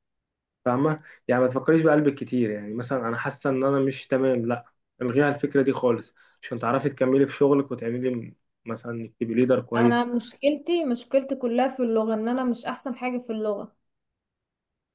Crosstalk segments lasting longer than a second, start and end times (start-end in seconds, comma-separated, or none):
none